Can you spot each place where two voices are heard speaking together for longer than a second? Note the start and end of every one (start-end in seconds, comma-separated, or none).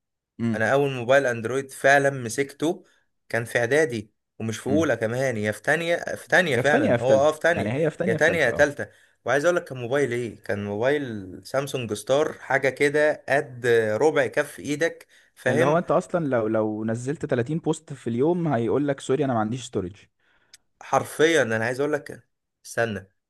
6.5-8.7